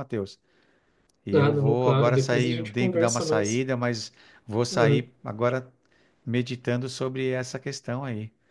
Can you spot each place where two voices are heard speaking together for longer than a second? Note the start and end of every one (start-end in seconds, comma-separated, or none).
1.3-3.7